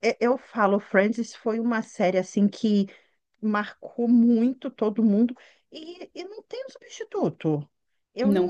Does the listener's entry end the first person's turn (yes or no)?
no